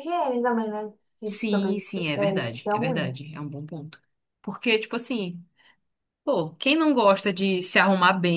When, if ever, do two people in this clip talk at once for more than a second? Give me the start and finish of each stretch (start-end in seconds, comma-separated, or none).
1.2-3.1